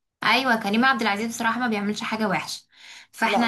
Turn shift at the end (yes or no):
no